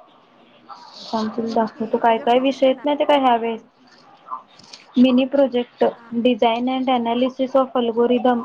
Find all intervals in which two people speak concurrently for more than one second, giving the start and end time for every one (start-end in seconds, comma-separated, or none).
1.5-2.9